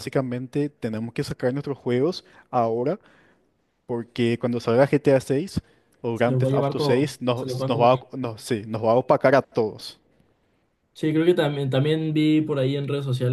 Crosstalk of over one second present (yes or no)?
yes